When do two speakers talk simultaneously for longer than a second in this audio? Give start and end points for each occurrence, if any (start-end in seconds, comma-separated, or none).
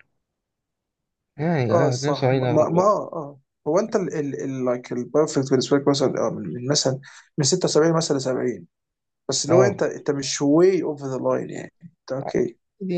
1.7-2.9